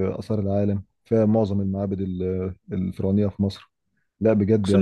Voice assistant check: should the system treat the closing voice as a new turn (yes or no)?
no